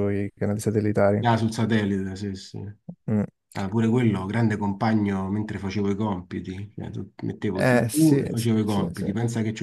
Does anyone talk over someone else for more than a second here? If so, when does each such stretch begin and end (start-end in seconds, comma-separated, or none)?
7.5-9.1